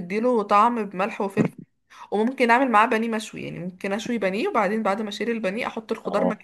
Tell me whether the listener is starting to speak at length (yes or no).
no